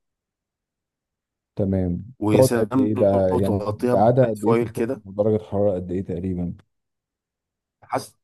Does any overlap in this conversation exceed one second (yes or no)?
yes